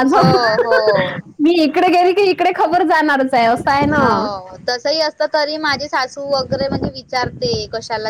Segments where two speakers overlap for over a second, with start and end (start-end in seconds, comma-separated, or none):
none